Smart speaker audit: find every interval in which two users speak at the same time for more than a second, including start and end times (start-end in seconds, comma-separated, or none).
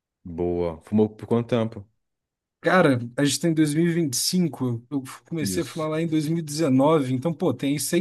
none